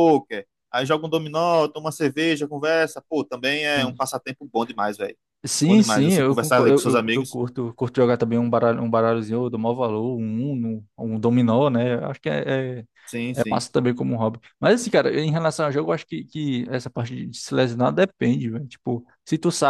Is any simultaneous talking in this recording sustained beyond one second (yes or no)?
yes